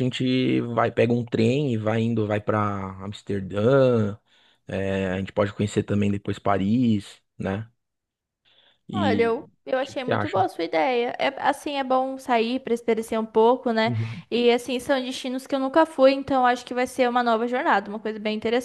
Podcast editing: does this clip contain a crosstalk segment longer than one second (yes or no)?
yes